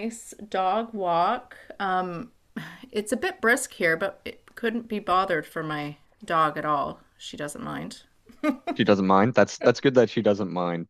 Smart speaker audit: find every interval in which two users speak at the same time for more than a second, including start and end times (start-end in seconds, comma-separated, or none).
none